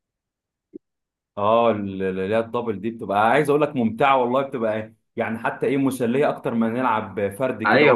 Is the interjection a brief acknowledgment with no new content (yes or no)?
no